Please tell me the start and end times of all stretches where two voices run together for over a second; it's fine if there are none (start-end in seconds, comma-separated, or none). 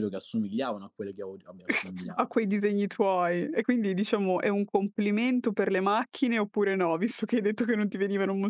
none